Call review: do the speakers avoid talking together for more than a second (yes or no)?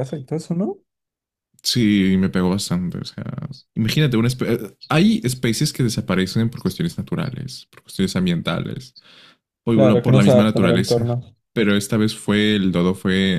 no